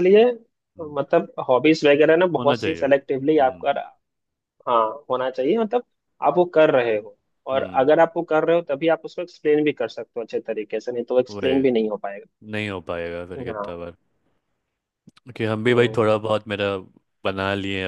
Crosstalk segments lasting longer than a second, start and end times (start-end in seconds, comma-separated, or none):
2.4-3.7